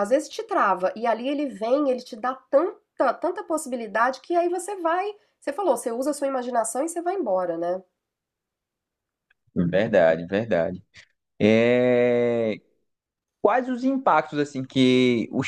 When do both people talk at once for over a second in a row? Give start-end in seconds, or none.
none